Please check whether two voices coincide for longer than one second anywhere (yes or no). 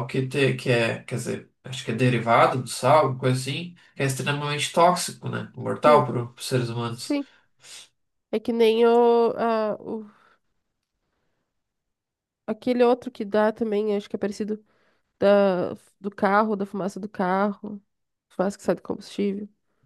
no